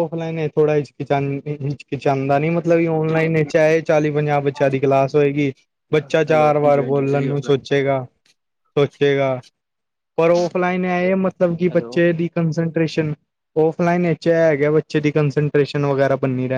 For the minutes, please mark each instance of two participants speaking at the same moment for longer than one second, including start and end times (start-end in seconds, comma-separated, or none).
6.3-7.5